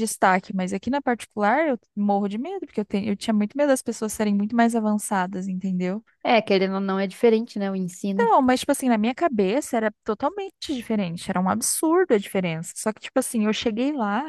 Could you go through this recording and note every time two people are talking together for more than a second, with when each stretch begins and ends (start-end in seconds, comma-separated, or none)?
none